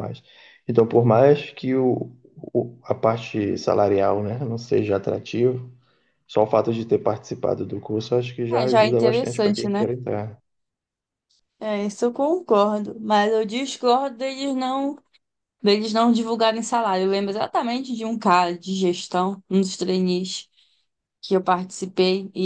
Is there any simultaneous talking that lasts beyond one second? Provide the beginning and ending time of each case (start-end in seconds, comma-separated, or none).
8.5-9.9